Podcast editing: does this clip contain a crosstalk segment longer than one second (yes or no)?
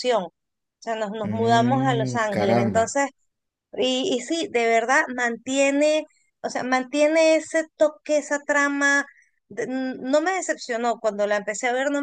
yes